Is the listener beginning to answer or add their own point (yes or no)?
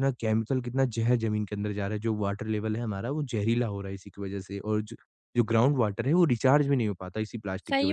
yes